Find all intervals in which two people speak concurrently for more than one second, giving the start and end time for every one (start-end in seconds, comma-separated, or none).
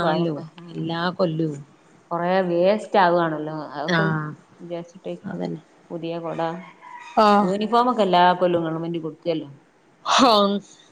none